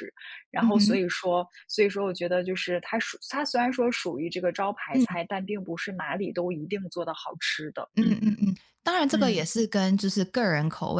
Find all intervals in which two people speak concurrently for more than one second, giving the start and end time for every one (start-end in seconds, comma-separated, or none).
none